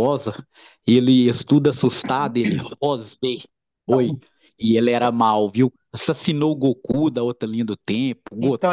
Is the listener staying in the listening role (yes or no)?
no